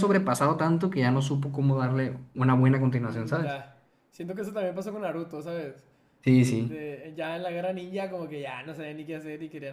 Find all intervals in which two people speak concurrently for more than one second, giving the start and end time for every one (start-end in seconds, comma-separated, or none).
none